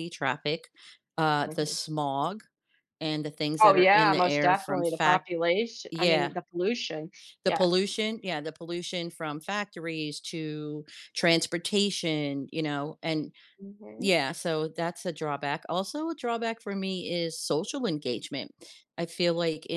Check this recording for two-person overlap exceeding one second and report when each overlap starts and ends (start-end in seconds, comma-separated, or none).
3.6-5.3